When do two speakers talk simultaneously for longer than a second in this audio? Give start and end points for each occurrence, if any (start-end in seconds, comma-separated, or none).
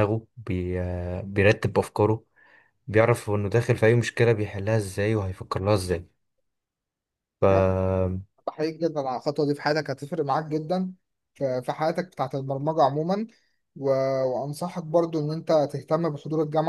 none